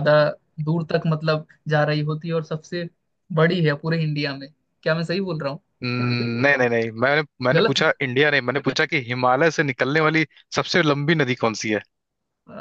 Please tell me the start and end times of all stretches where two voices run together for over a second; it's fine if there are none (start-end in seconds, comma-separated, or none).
none